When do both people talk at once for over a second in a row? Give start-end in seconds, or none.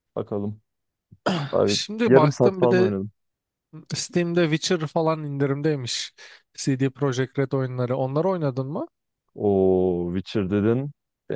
1.6-2.9